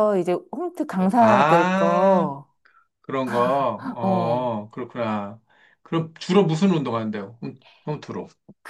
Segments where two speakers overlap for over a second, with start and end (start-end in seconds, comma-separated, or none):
1.0-2.3